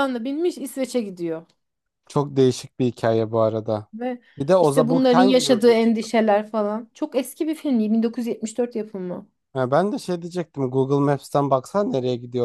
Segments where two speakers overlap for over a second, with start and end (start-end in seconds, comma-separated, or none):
4.6-6.1